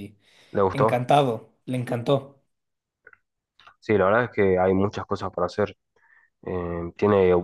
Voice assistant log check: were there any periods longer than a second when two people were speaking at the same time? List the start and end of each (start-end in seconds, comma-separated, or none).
none